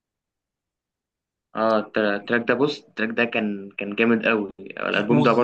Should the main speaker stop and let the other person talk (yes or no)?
yes